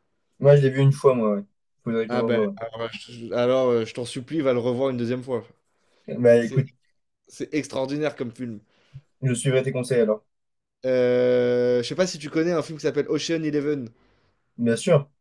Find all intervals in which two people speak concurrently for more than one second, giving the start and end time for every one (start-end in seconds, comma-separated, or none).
none